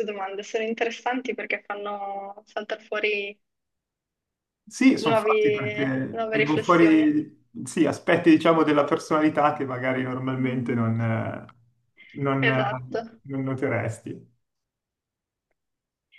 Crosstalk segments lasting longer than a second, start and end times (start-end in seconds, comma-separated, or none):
5.0-7.1